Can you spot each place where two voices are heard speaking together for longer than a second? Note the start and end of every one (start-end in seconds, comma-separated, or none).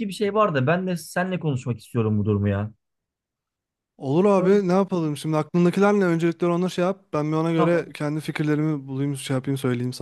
none